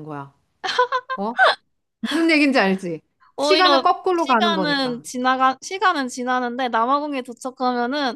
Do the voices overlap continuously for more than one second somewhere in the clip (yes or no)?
yes